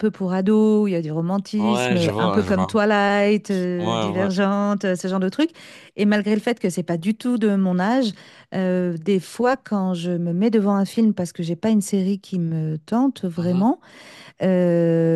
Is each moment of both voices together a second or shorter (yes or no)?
no